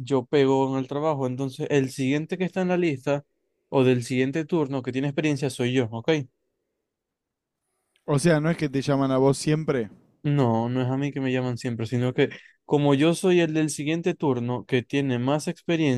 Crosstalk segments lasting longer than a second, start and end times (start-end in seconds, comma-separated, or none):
none